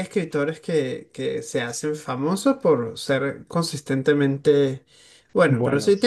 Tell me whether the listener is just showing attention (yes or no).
yes